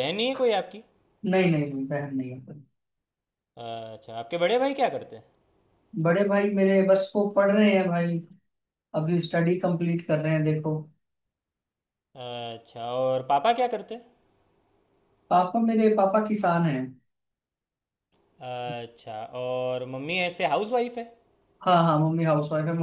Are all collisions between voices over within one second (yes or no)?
yes